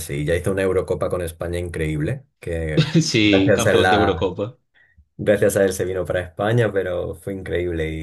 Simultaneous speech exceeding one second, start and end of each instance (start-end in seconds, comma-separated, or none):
3.0-4.3